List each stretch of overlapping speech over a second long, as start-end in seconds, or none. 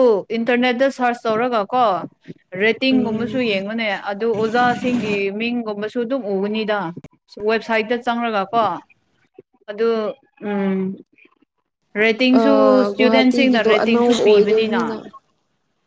12.9-14.8